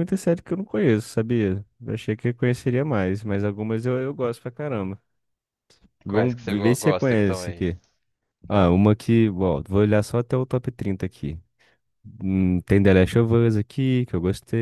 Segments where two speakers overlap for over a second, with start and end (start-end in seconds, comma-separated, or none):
6.1-7.6